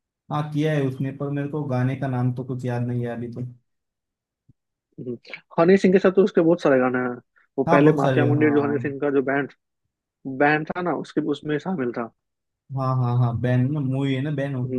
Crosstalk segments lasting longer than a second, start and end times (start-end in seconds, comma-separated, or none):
7.7-8.9